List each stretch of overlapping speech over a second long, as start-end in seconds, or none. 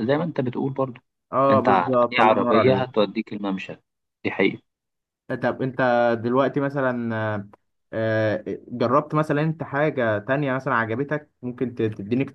1.5-3.0